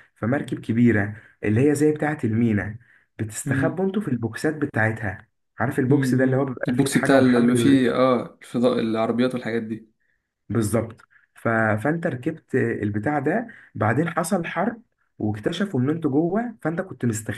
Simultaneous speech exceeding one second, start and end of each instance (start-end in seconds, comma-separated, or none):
5.9-7.9